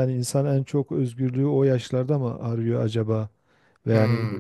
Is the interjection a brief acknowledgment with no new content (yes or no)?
yes